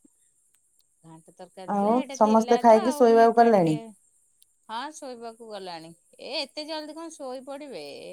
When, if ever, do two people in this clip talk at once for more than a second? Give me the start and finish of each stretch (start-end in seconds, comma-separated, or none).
1.8-3.8